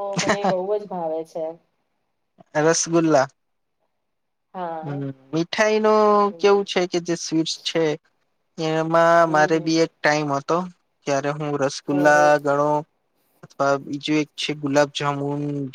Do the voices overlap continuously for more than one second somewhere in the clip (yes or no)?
no